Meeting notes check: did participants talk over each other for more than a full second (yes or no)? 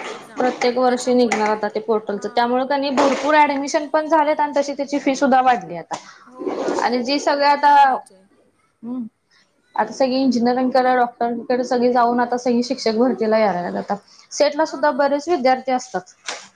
yes